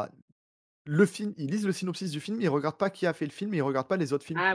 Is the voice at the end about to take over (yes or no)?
yes